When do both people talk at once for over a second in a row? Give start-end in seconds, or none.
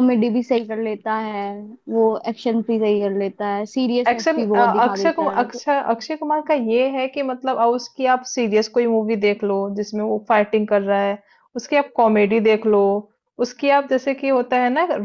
4.1-5.6